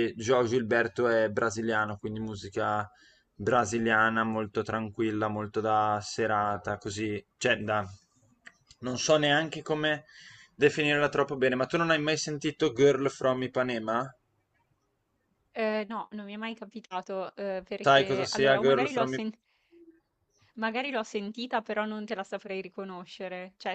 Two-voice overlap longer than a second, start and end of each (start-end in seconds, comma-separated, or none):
17.8-19.3